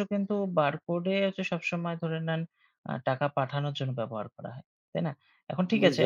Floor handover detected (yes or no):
no